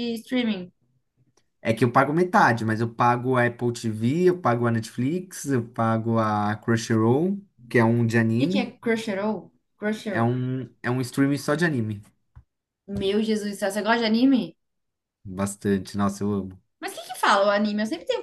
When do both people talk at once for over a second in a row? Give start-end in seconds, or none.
none